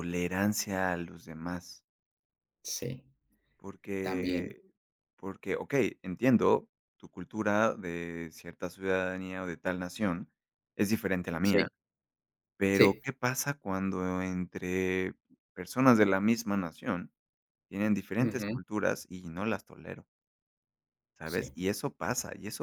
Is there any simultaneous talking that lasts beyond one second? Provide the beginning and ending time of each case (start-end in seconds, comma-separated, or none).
none